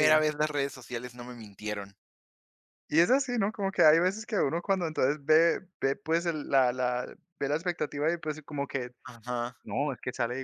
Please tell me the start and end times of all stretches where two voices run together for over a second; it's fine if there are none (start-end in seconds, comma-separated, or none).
none